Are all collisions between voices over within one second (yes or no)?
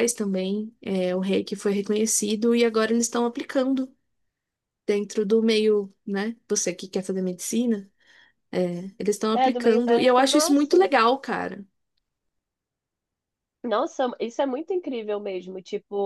no